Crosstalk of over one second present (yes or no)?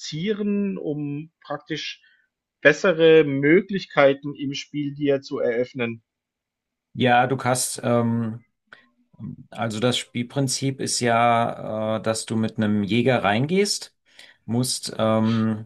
no